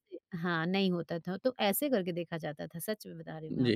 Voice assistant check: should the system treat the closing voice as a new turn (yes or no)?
yes